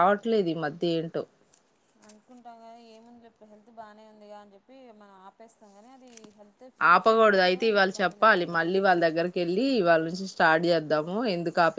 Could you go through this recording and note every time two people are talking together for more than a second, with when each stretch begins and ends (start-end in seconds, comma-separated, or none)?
6.9-8.8